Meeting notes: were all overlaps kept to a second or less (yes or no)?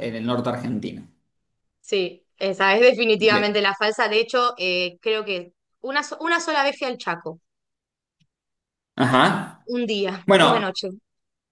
yes